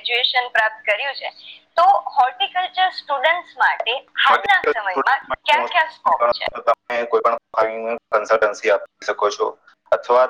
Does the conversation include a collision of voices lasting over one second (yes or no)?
yes